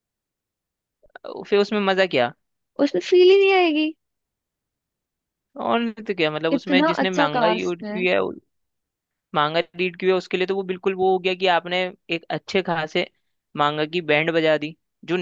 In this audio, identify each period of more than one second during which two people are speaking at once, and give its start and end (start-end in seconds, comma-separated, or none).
6.6-8.0